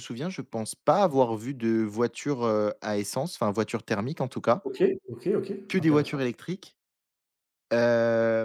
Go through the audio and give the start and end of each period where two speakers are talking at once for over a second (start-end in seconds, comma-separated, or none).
none